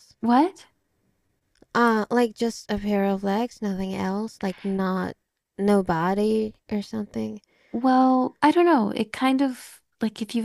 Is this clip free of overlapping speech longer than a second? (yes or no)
yes